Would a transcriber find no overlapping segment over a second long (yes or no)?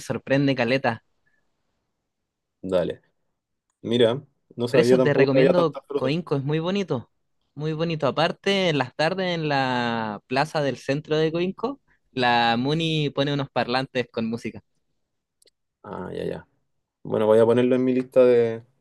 no